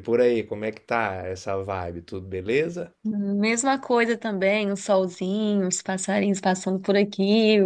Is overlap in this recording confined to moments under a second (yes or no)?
yes